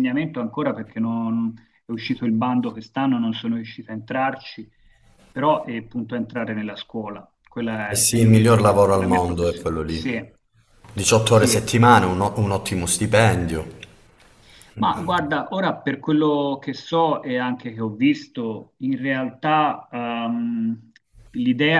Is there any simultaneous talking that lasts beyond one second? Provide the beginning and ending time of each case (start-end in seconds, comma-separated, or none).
7.9-10.2